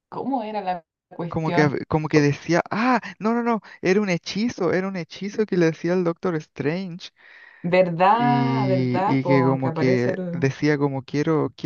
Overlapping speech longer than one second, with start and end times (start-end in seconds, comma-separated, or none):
8.1-10.5